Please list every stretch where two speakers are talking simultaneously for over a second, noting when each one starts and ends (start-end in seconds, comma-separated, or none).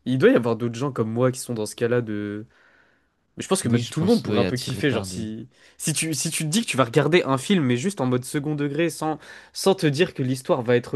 3.6-5.3